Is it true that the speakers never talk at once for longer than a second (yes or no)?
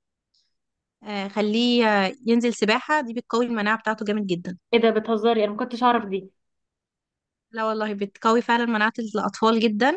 yes